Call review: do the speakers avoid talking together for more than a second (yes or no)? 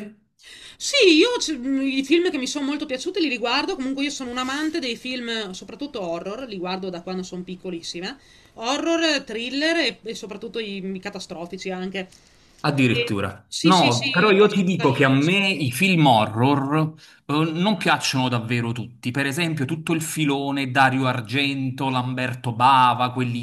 no